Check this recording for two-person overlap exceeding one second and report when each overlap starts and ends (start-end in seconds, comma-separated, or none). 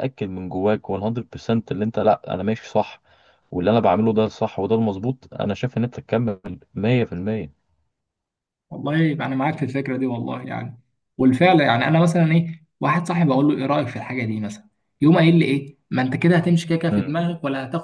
none